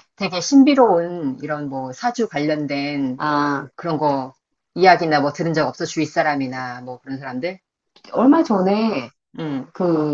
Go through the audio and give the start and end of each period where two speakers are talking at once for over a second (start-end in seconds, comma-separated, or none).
none